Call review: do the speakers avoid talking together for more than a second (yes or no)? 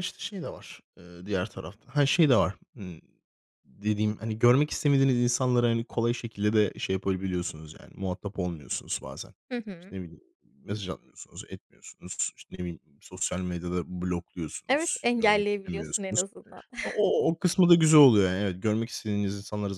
no